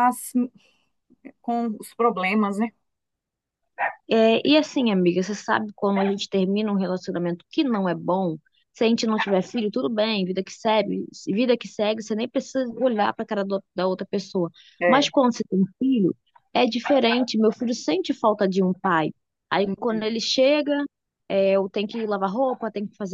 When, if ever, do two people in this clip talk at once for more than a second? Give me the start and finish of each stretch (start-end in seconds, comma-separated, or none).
none